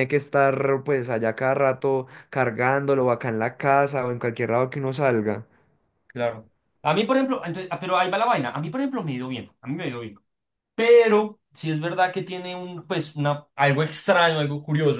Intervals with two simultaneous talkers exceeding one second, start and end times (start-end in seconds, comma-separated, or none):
none